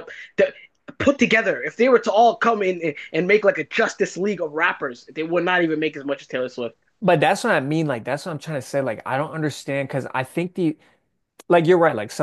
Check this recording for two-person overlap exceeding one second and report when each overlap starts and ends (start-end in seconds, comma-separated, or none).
none